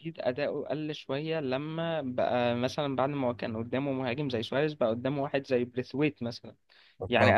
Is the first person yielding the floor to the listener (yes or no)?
no